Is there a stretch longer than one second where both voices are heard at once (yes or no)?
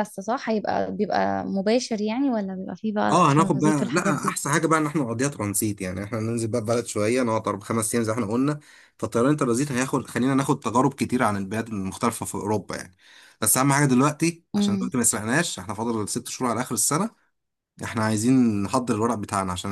yes